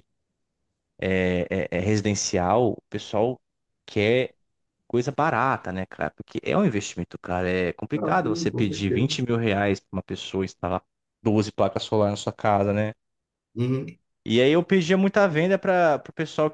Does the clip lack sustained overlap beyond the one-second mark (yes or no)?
no